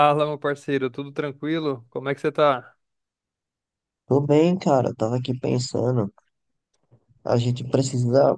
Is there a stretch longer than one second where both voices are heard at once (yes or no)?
no